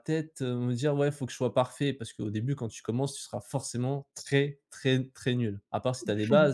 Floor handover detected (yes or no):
yes